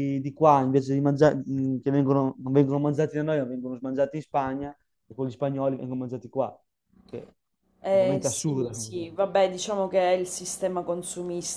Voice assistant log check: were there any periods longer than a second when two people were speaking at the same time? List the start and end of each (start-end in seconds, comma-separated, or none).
7.9-9.1